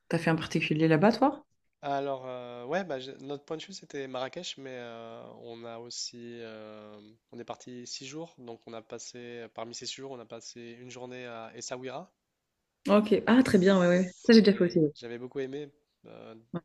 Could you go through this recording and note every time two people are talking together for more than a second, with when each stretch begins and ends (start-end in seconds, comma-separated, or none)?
13.4-14.8